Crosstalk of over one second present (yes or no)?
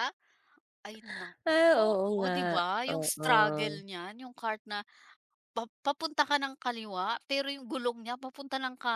yes